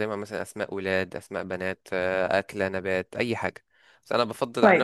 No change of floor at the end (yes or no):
yes